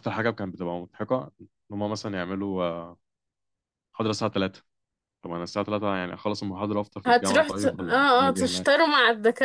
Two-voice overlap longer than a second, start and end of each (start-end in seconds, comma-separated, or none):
7.1-8.7